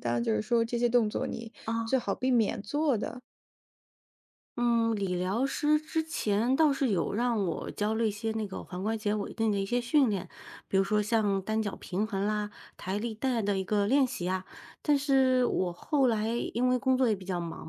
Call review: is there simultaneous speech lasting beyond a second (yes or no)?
no